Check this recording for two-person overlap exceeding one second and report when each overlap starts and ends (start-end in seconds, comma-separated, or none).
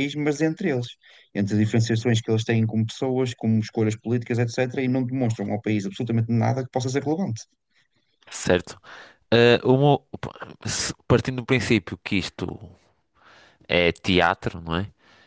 none